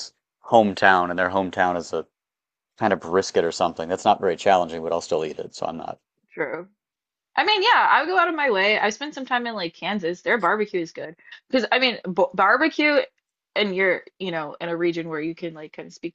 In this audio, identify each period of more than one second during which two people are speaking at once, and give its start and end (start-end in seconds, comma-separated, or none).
none